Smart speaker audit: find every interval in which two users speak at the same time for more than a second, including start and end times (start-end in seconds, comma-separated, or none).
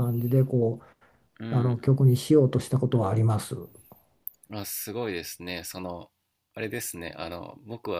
none